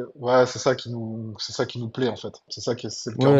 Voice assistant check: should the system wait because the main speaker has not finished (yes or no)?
no